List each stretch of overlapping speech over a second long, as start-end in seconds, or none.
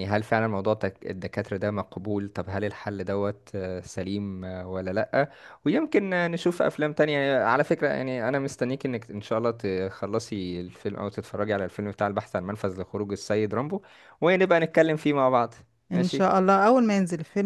none